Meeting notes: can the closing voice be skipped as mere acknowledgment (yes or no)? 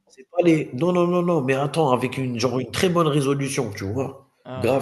yes